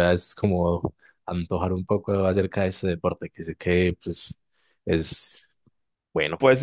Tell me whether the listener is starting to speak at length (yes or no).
yes